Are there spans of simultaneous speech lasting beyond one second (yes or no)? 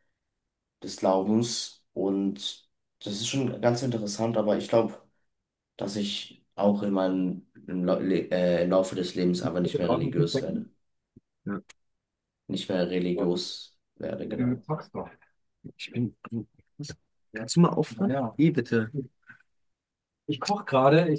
yes